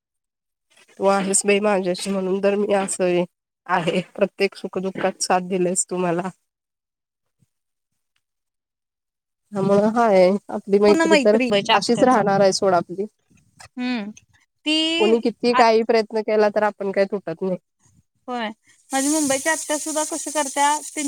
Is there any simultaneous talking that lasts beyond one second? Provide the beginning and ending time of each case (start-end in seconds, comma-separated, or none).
none